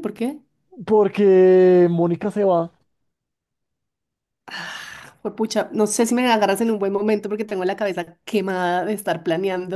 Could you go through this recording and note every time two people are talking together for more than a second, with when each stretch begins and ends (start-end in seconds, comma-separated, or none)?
none